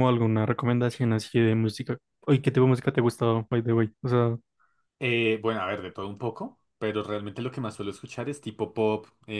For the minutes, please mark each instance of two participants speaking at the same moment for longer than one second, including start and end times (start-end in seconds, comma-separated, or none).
none